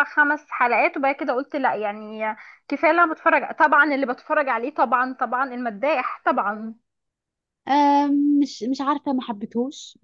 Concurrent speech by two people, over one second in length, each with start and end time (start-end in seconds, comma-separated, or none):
none